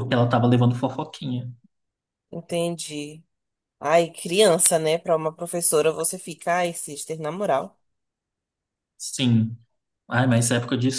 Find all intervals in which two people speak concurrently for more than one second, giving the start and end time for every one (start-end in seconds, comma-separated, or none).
none